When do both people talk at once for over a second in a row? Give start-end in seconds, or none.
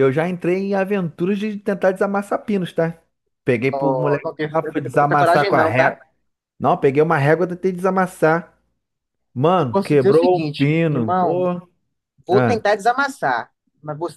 3.7-6.0, 9.6-11.5